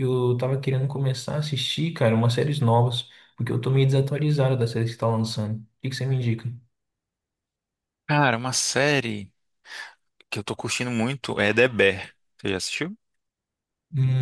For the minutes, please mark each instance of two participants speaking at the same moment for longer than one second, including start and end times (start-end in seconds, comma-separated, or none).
none